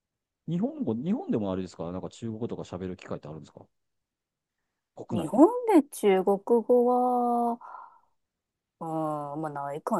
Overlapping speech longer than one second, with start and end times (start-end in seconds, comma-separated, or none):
none